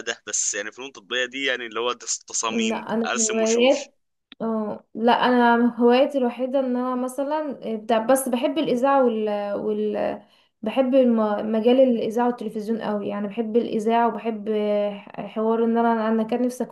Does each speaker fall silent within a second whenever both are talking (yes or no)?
no